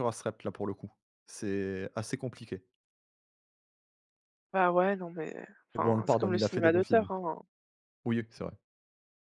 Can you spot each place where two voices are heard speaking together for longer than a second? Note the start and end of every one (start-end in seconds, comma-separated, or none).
5.7-7.1